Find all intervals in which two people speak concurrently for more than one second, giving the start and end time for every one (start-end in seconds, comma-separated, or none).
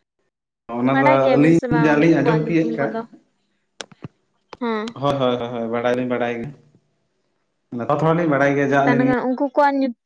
0.9-2.9